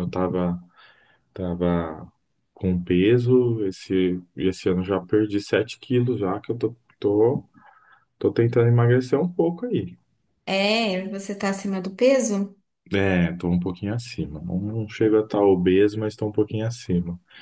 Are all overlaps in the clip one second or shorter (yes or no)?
yes